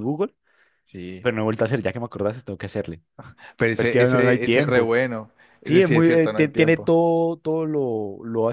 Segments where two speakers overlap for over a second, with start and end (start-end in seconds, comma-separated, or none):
3.7-4.9, 5.6-6.9